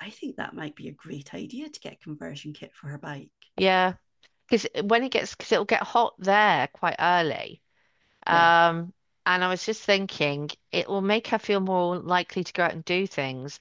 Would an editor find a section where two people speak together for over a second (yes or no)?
no